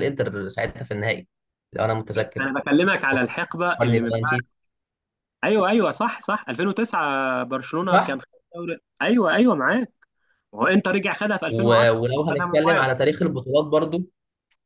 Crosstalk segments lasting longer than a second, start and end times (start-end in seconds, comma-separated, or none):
3.1-4.4, 11.5-12.9